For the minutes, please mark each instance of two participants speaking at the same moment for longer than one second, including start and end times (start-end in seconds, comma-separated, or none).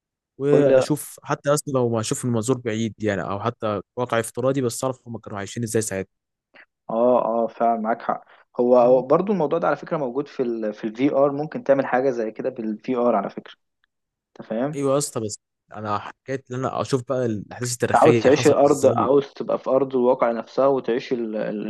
17.9-19.1